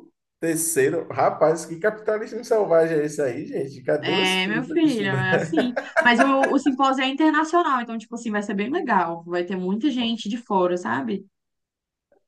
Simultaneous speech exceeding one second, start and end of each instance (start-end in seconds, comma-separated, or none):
4.0-5.5